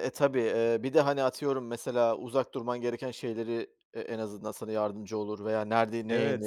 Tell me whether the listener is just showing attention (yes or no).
no